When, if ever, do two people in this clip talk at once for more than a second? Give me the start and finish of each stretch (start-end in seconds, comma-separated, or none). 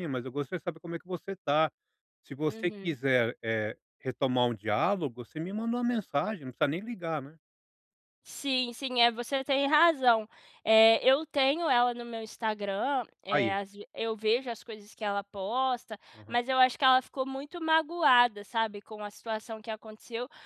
none